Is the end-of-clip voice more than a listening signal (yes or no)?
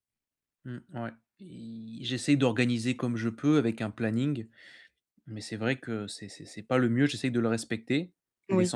no